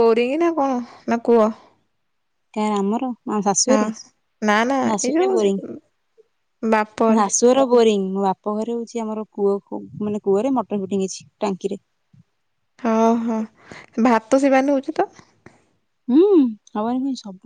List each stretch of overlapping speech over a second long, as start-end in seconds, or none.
none